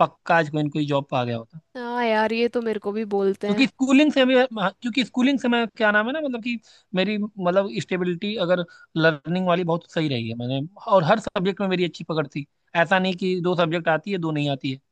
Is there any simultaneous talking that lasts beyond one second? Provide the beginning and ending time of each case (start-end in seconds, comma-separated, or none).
none